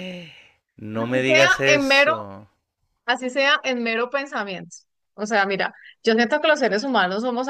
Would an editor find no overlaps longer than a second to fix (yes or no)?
no